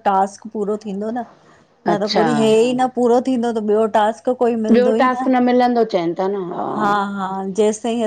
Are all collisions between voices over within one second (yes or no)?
yes